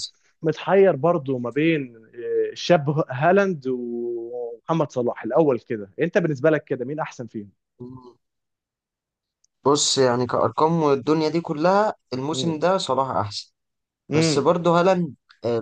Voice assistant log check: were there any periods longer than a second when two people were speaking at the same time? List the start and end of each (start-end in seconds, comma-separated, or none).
none